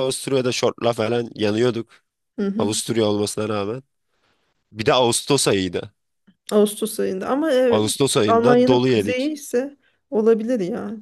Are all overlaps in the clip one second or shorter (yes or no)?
no